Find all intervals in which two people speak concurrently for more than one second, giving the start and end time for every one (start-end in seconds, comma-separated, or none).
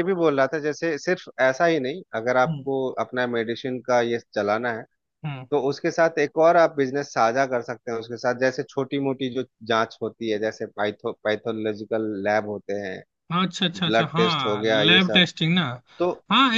13.8-15.2